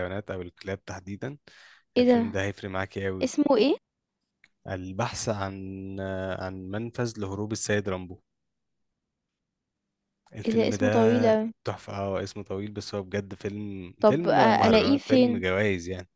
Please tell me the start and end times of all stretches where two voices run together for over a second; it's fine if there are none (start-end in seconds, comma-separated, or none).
14.0-15.4